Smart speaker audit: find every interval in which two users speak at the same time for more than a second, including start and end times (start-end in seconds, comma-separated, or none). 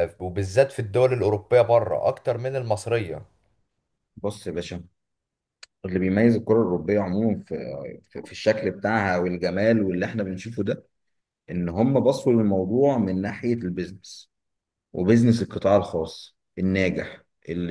none